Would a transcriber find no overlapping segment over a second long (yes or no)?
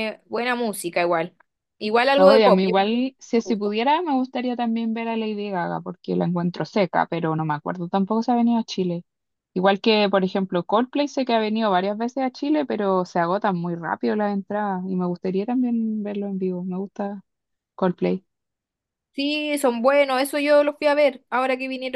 no